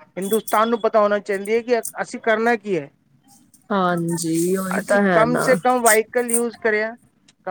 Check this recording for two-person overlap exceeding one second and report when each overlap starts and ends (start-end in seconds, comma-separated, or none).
none